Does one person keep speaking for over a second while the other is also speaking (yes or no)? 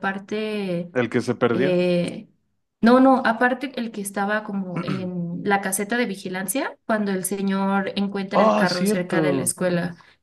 yes